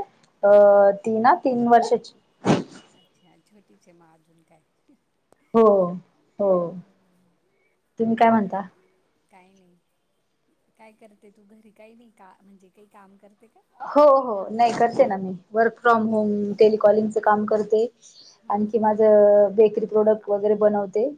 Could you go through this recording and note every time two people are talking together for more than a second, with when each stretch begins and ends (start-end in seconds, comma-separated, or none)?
none